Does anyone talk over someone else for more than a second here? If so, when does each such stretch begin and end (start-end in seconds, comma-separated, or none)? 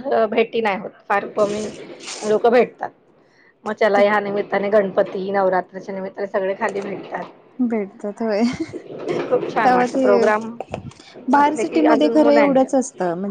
11.3-12.7